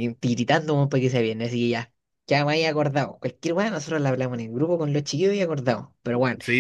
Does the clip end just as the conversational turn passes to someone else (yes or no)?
yes